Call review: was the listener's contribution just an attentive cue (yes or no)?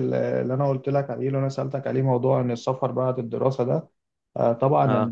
yes